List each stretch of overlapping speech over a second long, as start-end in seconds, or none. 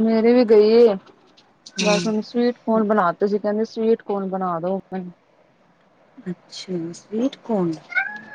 none